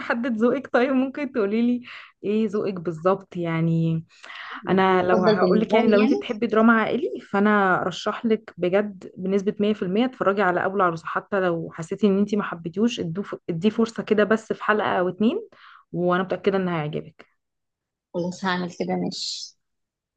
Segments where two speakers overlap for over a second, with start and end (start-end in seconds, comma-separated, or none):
4.9-6.2